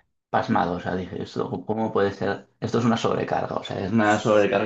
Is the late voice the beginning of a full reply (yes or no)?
no